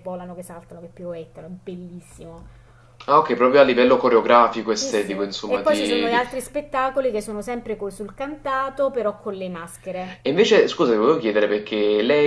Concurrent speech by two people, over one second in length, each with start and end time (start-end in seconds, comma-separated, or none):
4.8-6.2